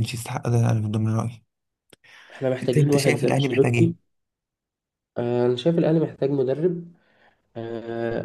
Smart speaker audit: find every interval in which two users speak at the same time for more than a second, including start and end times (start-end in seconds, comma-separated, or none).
2.6-3.9